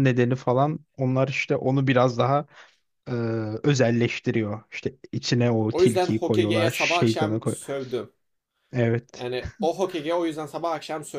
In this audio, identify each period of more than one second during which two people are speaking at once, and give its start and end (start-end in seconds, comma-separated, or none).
5.7-7.6